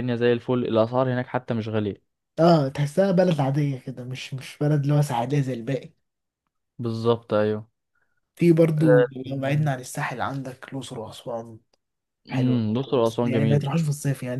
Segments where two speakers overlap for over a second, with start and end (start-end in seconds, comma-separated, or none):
12.3-13.7